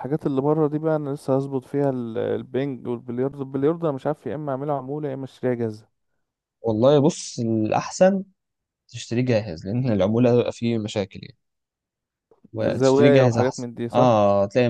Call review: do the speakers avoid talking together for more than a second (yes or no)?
no